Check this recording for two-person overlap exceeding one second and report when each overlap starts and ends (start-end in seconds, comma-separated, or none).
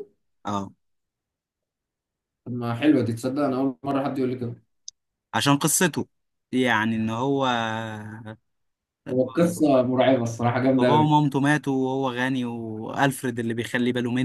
none